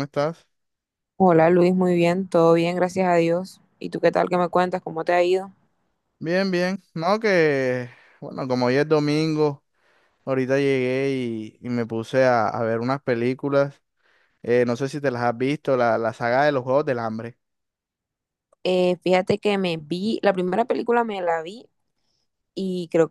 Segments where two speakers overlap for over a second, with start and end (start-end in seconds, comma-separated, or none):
none